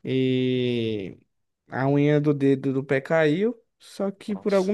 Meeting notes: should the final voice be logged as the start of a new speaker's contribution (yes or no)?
no